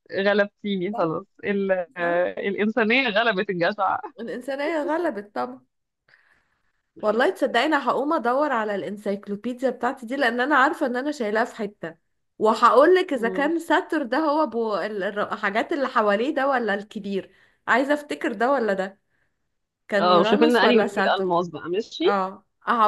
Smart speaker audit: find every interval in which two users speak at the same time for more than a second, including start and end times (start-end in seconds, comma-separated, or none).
20.0-21.3